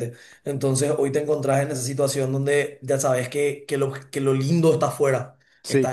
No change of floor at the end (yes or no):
yes